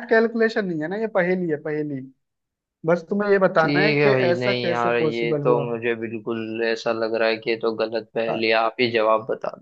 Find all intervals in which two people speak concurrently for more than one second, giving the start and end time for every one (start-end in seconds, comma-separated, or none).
3.6-5.6